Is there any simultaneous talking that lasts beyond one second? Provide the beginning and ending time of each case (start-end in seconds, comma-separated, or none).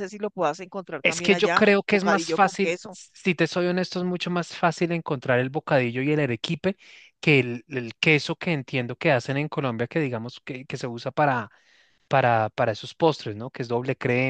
1.0-3.0